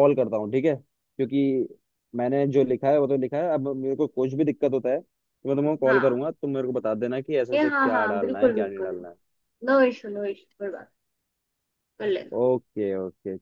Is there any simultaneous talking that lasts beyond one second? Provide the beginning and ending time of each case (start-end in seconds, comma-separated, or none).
7.5-9.0